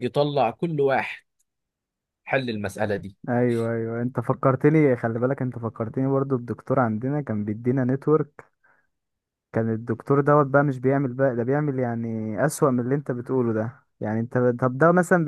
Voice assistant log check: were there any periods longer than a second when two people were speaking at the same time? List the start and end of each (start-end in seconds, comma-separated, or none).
none